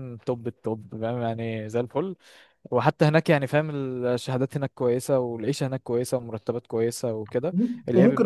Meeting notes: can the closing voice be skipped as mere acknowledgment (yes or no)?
no